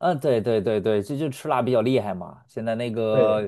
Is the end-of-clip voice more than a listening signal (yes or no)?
no